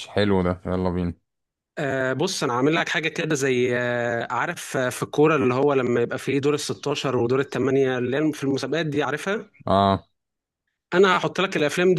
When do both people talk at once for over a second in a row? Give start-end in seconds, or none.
none